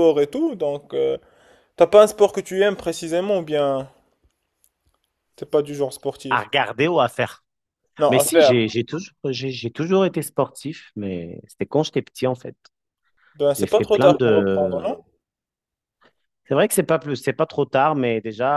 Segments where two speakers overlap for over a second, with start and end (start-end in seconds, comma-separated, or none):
13.5-14.8